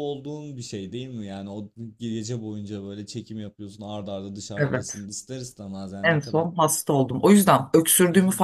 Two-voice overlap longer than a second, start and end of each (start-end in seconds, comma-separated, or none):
none